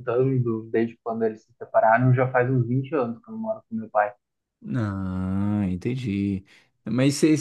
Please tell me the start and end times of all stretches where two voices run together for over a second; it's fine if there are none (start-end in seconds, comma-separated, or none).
none